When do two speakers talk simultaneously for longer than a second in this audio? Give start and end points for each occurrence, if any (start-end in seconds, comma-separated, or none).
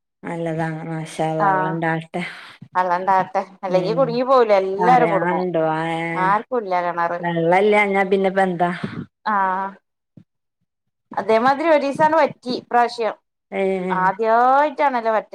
none